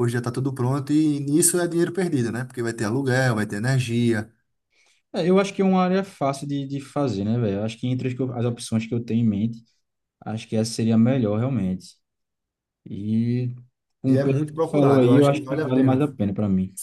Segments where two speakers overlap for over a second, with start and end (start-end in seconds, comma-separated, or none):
14.0-16.2